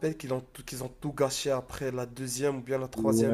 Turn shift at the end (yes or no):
yes